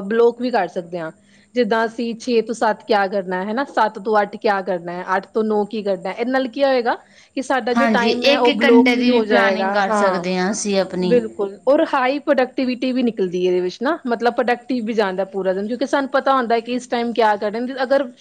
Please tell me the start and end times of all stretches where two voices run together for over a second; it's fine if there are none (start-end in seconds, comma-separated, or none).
7.8-10.2